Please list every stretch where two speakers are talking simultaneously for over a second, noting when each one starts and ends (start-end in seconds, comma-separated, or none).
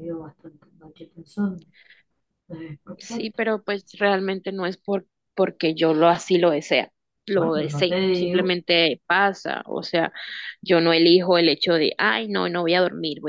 7.3-8.5